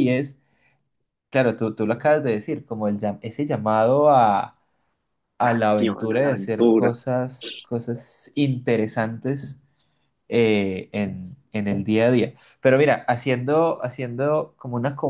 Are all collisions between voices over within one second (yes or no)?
no